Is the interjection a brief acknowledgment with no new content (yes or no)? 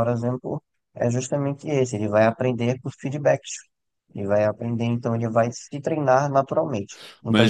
no